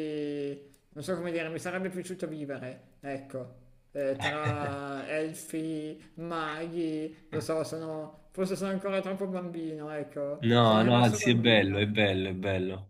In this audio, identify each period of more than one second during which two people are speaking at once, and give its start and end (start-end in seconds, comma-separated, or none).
10.4-12.0